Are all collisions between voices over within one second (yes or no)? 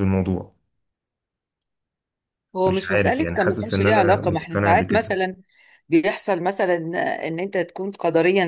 no